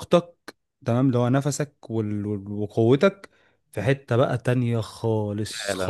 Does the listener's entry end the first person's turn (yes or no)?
yes